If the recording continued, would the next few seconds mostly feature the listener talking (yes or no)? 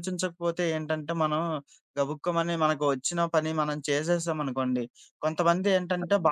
no